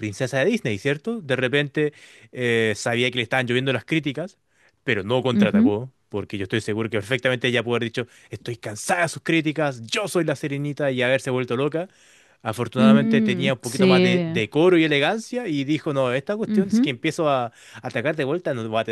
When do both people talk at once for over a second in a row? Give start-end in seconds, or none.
12.8-14.4